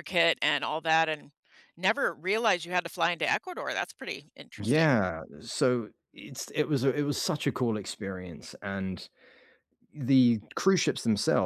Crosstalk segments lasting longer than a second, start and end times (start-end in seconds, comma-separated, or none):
none